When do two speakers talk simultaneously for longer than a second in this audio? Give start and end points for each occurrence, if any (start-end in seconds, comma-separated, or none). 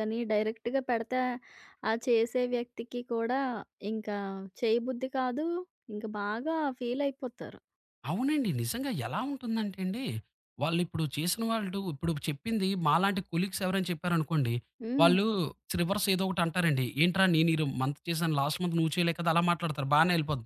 none